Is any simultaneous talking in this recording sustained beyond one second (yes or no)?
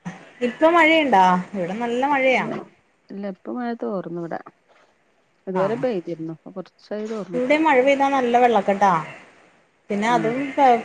no